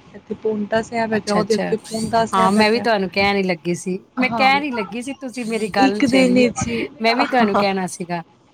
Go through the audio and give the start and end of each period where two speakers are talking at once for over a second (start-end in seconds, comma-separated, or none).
none